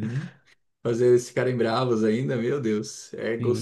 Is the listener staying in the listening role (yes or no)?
yes